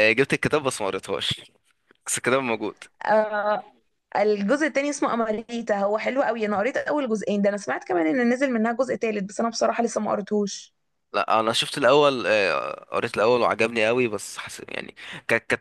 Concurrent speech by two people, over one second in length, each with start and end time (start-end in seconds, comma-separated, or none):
none